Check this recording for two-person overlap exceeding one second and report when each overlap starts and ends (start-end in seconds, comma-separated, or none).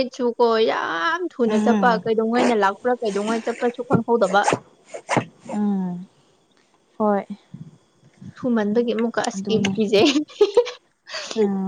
none